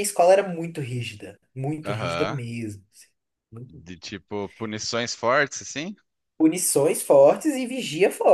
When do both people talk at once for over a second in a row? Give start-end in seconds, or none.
none